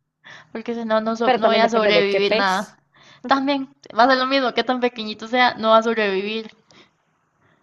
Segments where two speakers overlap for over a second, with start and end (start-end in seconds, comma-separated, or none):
1.2-2.8